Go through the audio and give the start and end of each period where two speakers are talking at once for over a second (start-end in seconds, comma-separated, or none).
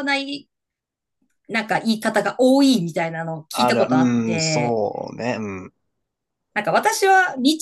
3.5-4.8